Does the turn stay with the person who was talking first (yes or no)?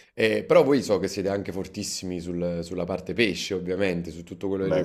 yes